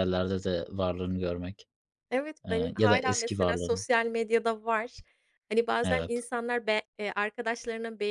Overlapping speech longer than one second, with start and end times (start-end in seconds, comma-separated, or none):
2.5-3.8